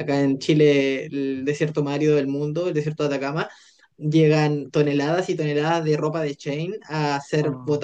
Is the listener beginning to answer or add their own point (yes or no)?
no